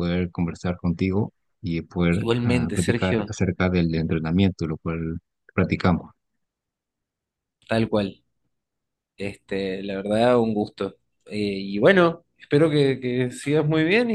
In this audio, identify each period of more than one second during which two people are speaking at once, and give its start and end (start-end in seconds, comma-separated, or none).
2.1-3.3